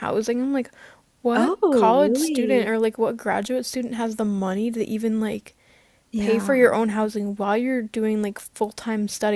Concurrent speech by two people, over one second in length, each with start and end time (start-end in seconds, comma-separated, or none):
1.3-2.7